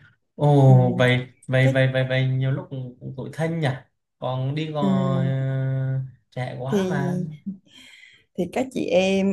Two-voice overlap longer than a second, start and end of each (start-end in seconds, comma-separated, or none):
none